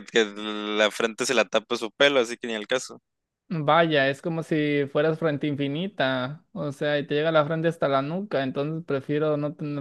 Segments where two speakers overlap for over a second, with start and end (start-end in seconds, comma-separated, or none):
none